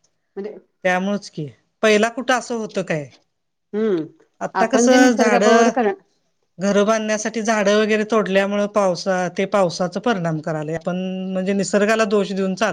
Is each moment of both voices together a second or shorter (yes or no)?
no